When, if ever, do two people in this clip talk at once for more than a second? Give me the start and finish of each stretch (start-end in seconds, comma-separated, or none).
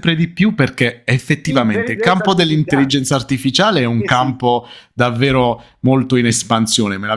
1.5-3.0